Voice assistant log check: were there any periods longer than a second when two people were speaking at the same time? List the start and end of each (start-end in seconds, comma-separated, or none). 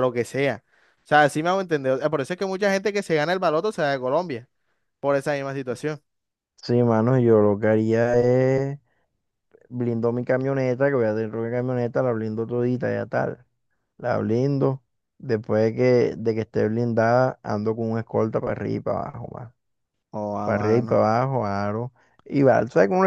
none